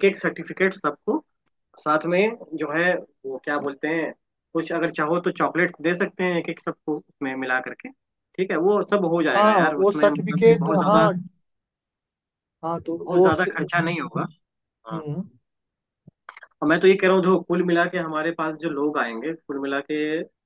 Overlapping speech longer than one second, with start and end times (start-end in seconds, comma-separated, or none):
9.4-11.1